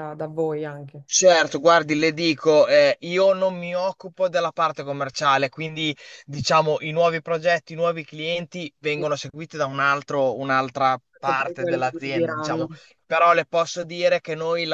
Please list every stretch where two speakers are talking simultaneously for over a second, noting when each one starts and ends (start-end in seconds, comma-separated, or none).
11.1-12.7